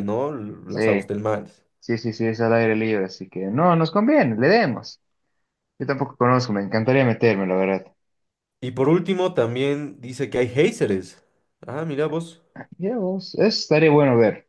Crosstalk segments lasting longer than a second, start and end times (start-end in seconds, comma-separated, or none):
none